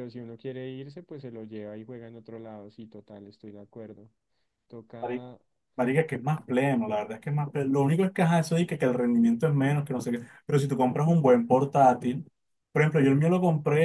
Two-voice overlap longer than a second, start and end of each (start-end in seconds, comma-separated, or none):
none